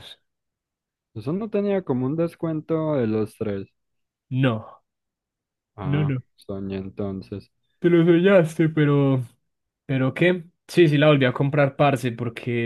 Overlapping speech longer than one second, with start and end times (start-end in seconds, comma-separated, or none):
none